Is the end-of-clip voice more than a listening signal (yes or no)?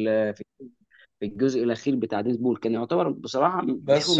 yes